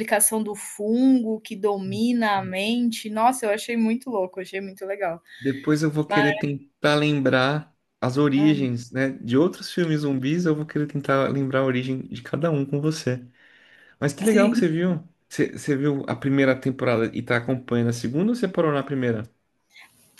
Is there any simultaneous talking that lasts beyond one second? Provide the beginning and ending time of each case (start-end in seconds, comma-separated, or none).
none